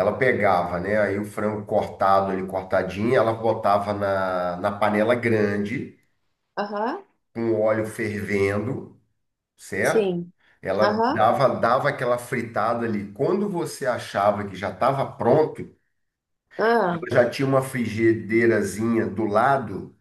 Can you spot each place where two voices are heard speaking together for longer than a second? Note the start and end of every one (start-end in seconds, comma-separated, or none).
none